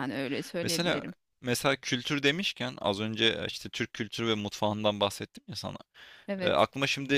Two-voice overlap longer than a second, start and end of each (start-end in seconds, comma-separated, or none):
none